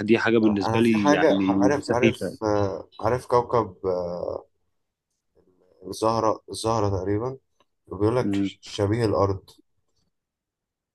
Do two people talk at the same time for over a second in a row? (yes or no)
yes